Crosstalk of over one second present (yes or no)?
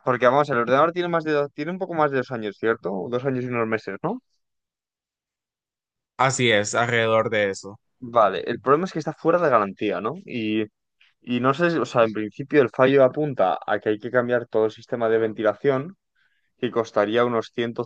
no